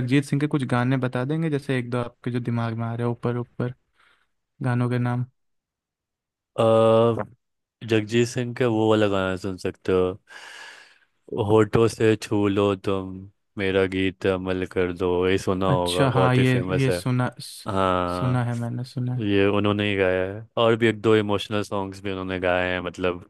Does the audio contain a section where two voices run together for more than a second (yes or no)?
yes